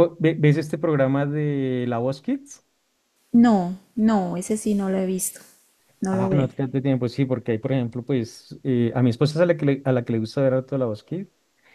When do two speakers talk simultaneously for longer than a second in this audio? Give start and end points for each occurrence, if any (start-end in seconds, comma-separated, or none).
none